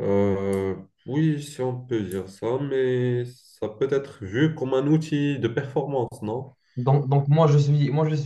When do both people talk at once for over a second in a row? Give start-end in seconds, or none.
none